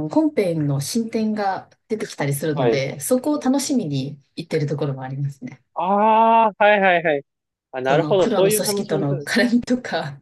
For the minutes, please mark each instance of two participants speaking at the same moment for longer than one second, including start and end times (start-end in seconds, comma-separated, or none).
7.8-9.4